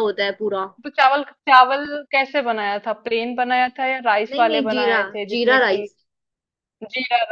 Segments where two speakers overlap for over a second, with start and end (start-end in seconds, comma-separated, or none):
4.3-5.8